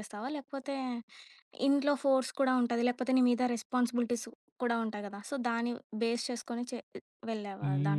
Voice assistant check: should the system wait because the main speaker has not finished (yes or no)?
no